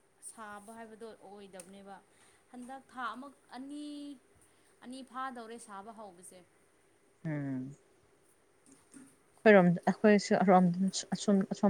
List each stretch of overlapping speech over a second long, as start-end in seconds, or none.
none